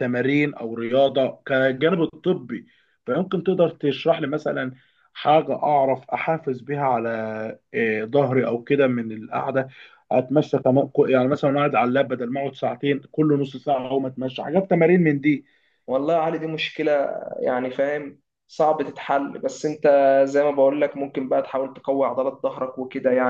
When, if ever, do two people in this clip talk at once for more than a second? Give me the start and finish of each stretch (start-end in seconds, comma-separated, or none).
none